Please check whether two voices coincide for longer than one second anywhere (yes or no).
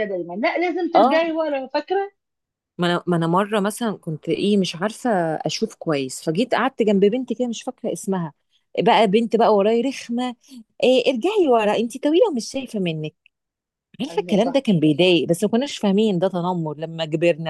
no